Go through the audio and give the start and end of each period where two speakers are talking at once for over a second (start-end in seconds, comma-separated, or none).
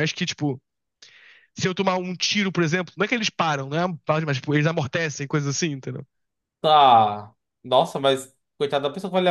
none